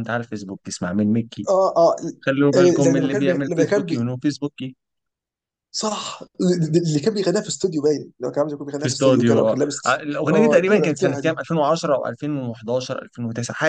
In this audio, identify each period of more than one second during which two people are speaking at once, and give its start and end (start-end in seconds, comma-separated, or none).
2.5-4.1, 8.8-11.4